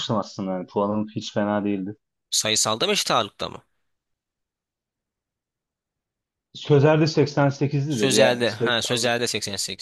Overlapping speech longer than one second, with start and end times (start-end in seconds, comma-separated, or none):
7.9-9.1